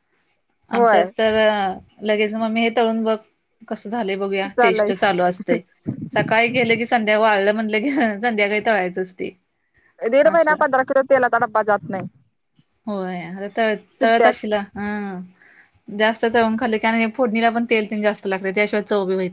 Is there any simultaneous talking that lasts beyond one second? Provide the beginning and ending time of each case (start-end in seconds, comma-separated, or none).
none